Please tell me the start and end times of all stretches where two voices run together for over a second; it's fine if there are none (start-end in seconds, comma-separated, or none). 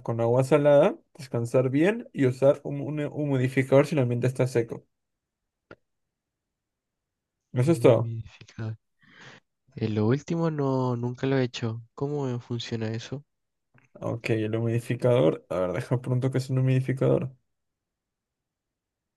none